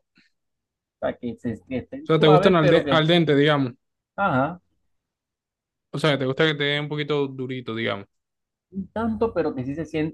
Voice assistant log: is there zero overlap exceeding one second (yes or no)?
no